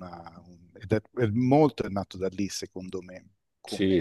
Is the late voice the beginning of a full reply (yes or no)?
yes